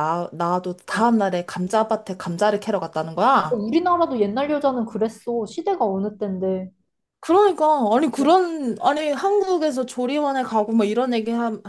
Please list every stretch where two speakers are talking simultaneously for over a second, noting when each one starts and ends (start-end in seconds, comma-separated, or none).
none